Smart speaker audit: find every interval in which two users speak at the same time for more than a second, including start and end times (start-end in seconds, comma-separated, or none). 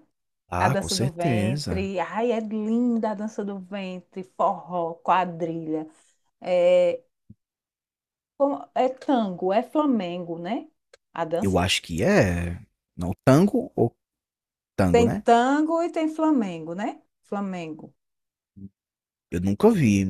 0.6-1.9